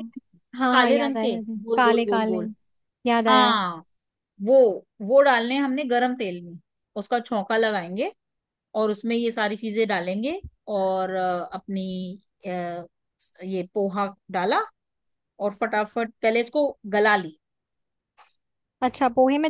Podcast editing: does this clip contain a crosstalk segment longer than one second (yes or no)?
yes